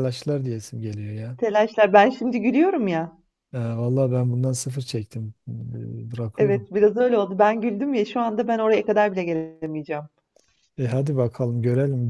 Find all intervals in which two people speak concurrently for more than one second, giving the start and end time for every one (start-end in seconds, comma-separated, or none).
none